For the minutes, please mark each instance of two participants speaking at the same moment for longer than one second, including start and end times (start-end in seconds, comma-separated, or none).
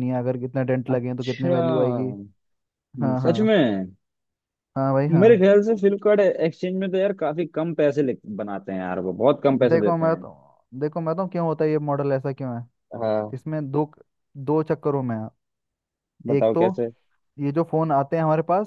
0.9-2.1